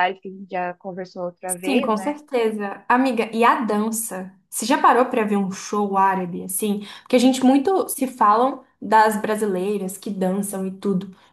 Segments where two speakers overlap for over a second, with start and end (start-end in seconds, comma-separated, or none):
none